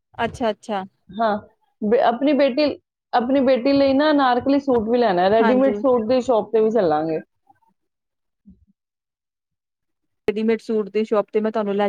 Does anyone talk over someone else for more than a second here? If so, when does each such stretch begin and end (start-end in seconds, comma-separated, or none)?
none